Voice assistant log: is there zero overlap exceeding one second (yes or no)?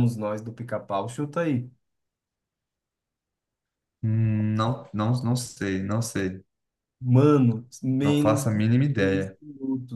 no